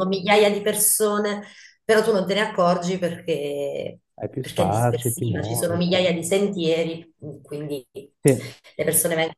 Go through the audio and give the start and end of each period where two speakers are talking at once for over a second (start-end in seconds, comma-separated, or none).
4.4-6.0